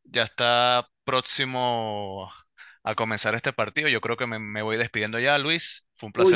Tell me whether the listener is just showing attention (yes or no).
no